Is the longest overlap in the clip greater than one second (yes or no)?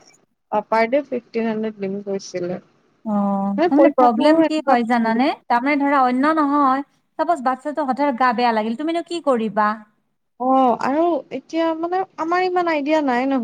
yes